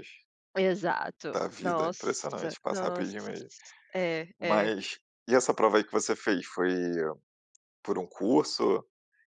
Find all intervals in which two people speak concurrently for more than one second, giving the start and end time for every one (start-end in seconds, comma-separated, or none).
1.3-3.1